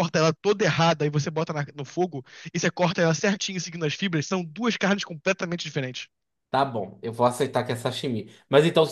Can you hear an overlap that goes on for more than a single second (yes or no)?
no